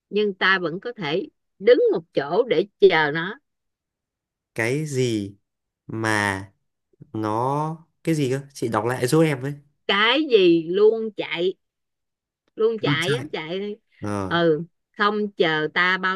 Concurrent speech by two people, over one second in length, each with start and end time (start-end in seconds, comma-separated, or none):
none